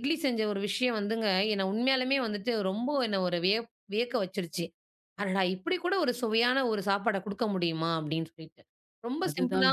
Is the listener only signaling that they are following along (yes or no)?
yes